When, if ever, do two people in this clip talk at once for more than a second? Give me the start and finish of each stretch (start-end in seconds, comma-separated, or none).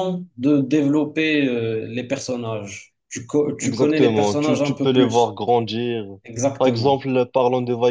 3.6-5.4